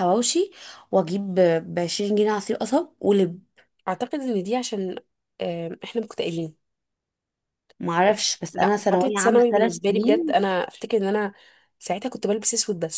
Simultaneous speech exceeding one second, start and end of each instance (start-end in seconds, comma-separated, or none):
8.5-10.4